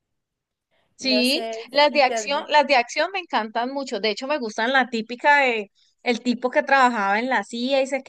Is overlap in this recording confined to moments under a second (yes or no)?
no